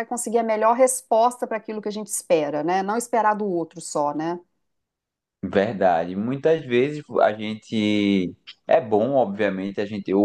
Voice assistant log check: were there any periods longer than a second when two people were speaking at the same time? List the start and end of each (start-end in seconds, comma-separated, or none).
none